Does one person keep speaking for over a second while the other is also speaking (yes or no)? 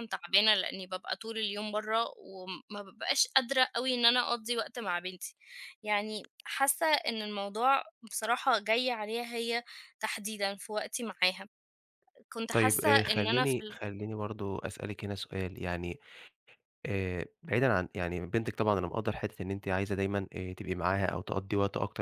yes